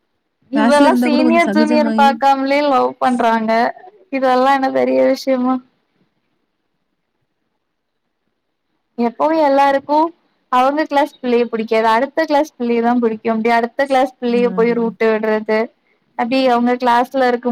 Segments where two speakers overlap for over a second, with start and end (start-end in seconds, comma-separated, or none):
0.6-2.1